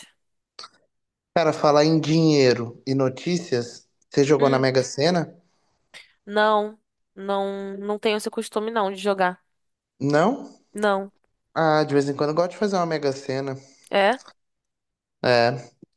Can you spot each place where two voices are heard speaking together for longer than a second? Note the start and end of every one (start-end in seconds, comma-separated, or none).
none